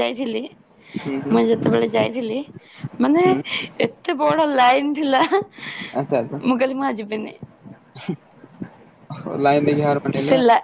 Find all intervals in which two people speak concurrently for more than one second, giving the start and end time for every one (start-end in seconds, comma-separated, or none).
none